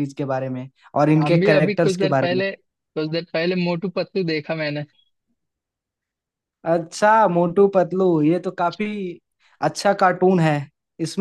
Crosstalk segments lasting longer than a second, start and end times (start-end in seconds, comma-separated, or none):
1.2-2.4